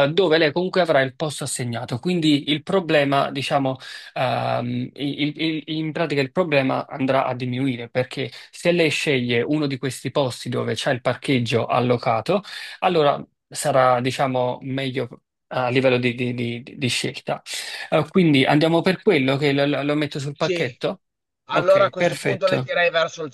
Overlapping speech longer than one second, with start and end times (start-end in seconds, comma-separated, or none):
21.5-22.7